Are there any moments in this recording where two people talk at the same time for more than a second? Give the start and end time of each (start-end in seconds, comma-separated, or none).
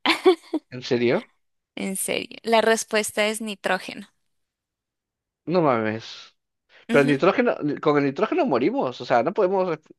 none